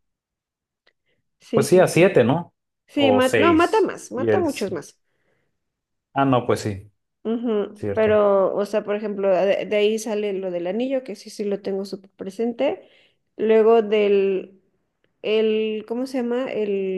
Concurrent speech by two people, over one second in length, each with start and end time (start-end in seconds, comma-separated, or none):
3.0-4.8